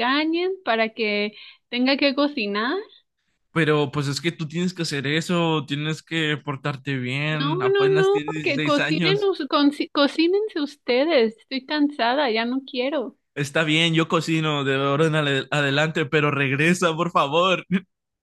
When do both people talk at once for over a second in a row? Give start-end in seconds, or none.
7.3-9.3